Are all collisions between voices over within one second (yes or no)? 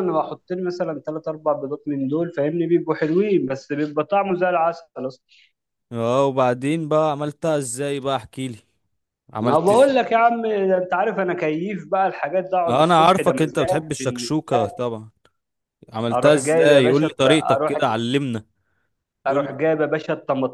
no